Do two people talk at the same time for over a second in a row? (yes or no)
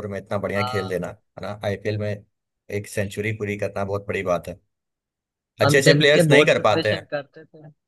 yes